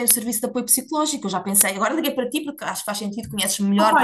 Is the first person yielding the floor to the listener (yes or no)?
yes